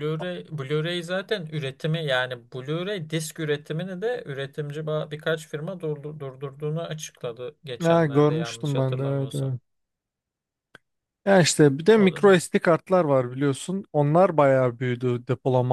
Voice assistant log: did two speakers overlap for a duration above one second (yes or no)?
yes